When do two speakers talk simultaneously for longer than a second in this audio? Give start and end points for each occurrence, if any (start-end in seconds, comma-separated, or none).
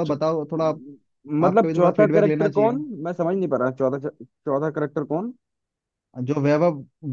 1.4-2.8